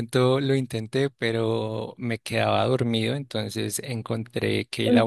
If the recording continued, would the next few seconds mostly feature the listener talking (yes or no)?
no